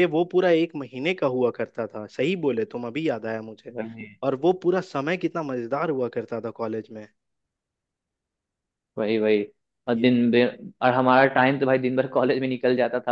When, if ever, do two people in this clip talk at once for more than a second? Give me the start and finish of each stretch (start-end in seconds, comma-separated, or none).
none